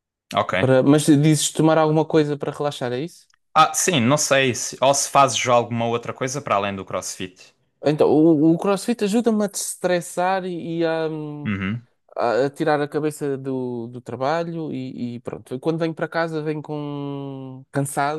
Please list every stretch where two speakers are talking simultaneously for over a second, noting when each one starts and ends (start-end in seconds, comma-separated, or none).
none